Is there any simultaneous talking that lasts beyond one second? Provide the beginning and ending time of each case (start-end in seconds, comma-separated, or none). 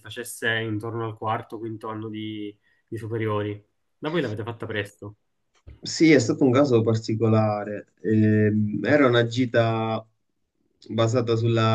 none